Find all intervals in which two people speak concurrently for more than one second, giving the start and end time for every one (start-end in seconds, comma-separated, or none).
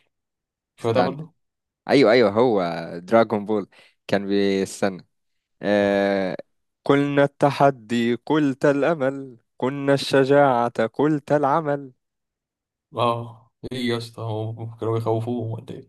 none